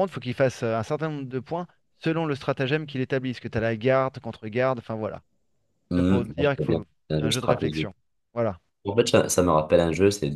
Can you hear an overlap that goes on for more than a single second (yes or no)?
yes